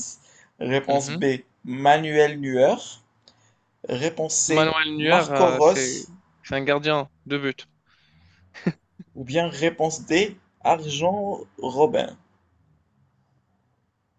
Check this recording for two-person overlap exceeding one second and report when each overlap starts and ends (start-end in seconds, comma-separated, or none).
4.5-6.0